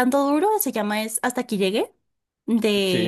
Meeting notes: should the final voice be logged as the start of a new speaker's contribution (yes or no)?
no